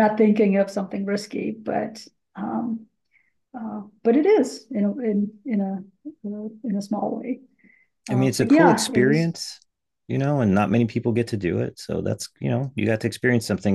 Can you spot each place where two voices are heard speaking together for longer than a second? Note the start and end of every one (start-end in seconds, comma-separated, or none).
8.1-9.3